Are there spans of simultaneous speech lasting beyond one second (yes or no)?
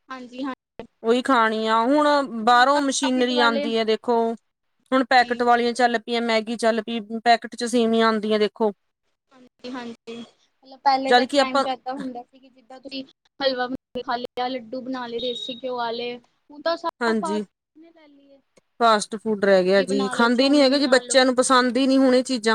yes